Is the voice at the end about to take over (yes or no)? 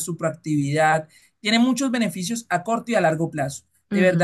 no